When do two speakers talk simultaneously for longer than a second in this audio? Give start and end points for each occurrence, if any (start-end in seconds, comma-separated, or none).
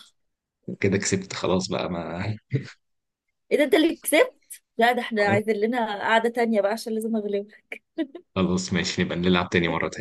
none